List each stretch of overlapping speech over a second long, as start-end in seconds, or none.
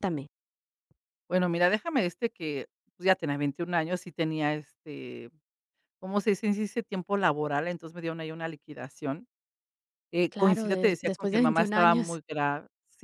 10.3-12.2